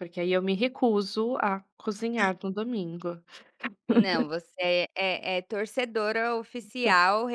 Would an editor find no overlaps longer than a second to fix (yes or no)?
yes